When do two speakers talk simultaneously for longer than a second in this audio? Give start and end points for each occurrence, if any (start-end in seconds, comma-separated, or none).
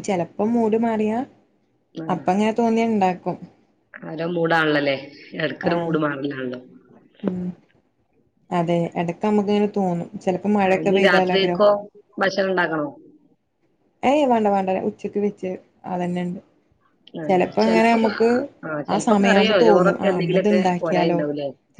18.9-21.2